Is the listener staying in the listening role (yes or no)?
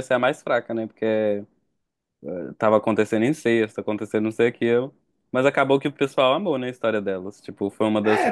no